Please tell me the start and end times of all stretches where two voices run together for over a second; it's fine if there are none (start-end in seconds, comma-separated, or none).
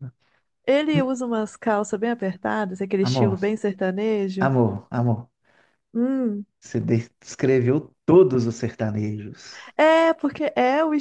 none